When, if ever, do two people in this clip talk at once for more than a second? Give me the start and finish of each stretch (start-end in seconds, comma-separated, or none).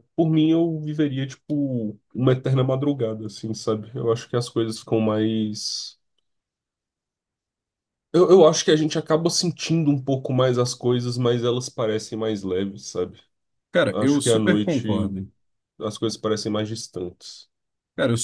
13.9-15.1